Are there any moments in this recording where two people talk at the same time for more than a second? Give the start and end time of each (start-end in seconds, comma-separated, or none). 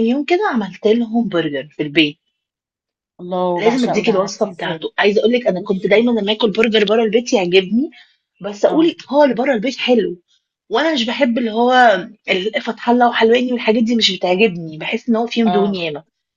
3.6-4.9